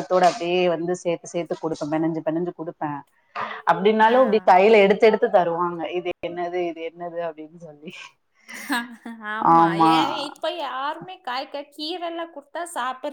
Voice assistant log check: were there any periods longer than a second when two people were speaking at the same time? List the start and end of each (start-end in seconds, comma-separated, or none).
none